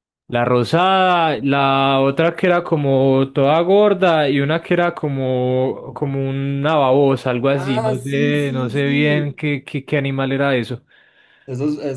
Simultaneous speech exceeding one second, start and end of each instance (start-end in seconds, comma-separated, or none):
7.5-9.4